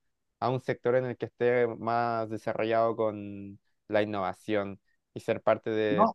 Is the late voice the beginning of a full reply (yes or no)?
no